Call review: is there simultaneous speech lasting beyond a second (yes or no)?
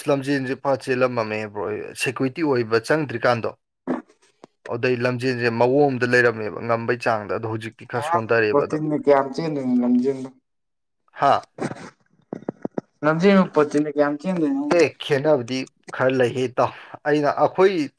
no